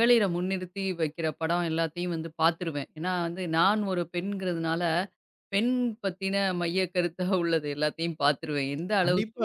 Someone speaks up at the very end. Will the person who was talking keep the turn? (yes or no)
no